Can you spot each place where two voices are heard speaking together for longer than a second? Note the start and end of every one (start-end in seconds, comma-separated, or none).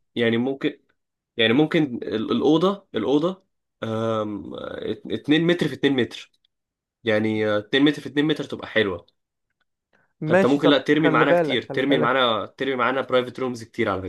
10.3-12.2